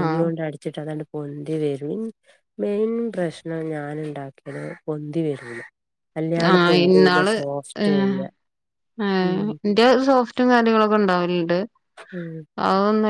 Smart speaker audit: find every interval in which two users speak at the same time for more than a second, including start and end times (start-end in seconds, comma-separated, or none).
none